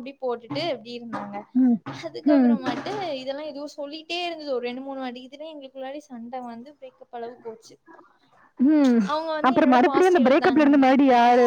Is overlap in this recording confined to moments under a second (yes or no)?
no